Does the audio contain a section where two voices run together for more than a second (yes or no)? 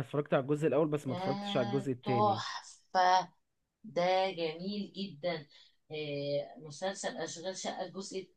yes